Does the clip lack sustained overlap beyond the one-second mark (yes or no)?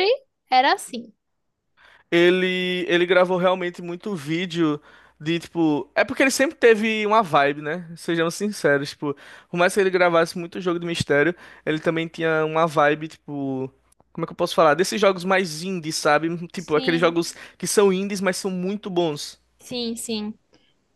yes